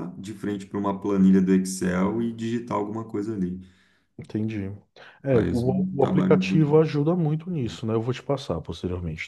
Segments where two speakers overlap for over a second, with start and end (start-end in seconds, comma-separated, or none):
5.3-6.8